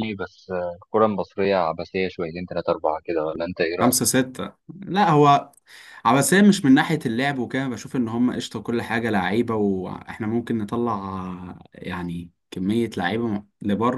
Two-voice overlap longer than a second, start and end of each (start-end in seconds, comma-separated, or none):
none